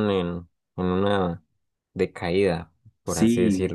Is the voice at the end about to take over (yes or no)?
yes